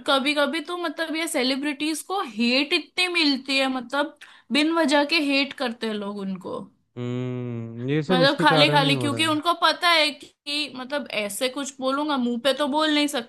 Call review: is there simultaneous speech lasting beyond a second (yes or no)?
yes